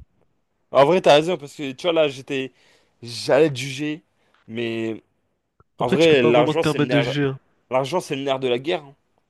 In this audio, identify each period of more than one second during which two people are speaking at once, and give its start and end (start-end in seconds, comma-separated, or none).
5.8-7.1